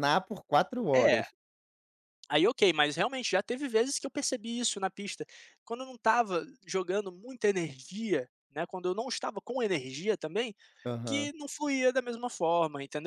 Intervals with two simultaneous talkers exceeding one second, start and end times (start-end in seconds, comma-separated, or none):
none